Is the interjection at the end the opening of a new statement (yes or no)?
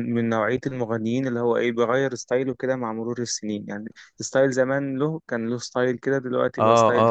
yes